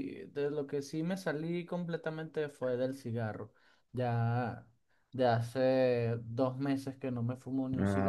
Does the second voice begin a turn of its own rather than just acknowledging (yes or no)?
yes